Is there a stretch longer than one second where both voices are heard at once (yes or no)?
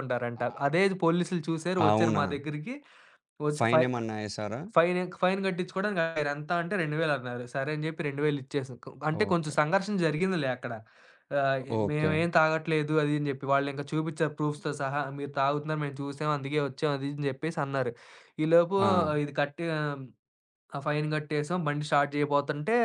no